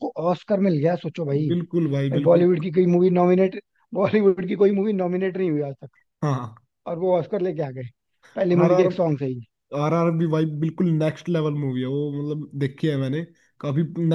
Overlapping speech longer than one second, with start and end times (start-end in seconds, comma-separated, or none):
none